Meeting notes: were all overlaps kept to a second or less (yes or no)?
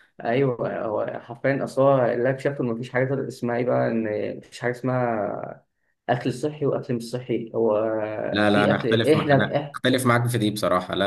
no